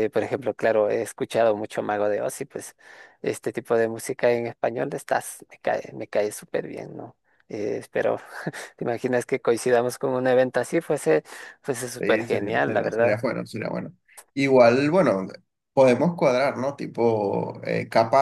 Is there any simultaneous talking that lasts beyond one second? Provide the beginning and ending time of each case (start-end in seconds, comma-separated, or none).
12.0-13.2